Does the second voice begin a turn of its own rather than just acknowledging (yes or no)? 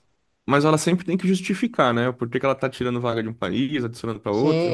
yes